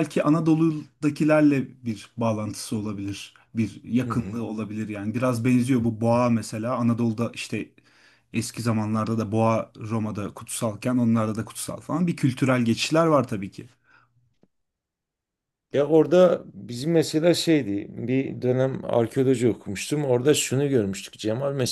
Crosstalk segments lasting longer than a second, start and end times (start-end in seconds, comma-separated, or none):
none